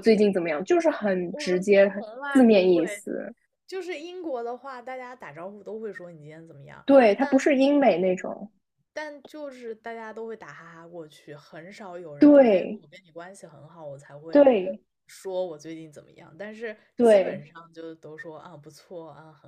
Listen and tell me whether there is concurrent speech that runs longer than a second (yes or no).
yes